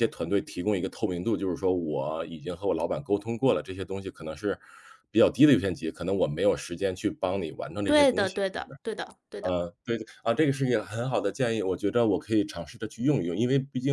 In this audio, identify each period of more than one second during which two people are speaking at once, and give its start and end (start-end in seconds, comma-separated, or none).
none